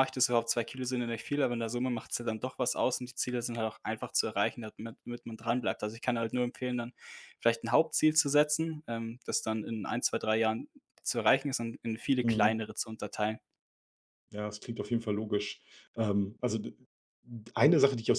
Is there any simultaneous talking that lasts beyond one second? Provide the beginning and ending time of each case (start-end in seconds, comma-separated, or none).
none